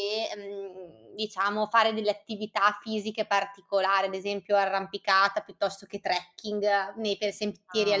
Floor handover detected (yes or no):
yes